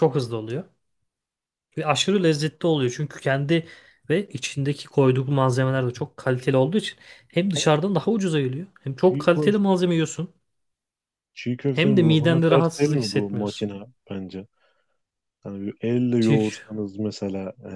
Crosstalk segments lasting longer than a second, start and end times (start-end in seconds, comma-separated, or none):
11.7-13.7